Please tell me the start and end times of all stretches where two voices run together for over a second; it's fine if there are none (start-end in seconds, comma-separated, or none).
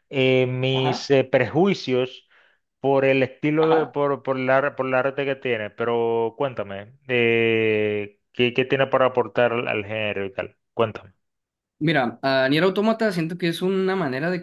none